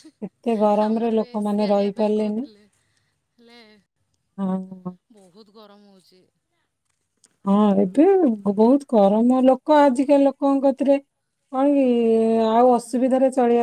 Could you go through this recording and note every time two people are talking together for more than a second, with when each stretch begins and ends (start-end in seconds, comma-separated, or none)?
0.8-2.5